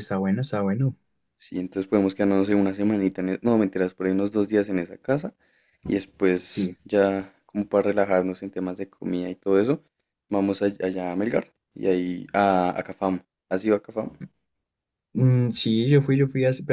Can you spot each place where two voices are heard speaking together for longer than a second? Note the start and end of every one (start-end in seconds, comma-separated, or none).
none